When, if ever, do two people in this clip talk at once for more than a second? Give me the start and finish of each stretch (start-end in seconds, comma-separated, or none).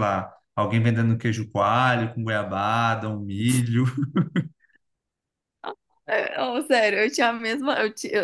none